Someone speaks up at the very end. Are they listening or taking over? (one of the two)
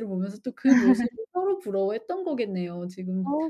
taking over